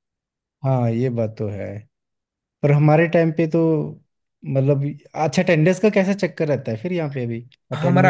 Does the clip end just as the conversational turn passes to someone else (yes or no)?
yes